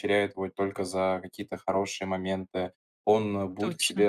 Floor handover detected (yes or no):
no